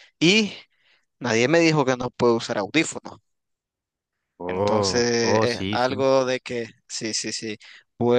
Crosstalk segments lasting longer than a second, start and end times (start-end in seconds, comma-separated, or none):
4.5-6.0